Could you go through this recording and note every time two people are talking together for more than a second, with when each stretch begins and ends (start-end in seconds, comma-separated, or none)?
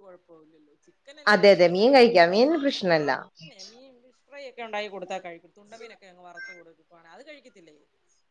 none